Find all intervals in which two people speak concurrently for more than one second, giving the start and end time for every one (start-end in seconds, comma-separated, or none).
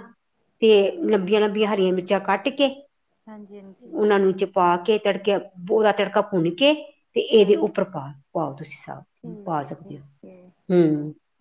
9.1-10.5